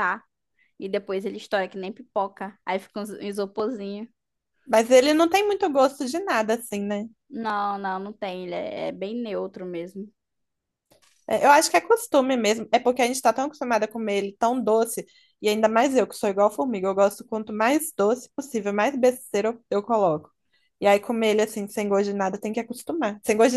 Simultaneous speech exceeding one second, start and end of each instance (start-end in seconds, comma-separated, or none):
none